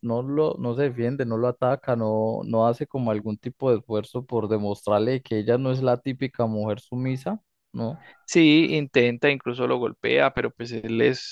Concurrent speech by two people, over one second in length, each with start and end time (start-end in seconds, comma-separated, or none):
none